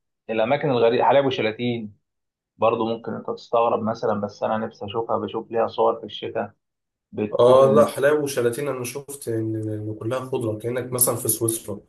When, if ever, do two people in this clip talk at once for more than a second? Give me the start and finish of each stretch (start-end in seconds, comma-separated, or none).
none